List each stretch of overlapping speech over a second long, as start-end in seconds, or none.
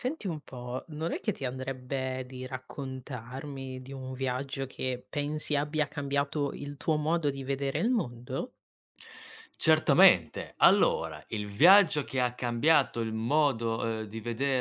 none